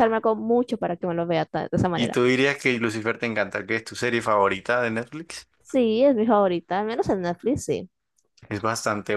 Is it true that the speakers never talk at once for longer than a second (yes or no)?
yes